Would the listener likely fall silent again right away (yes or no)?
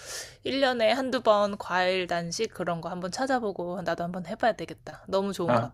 no